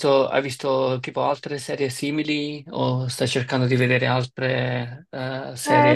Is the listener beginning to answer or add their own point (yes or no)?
yes